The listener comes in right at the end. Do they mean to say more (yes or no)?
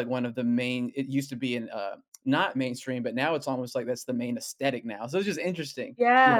yes